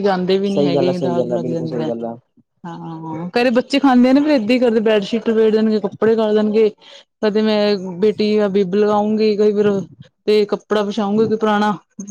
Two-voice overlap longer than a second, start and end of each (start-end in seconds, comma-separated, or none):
0.5-1.9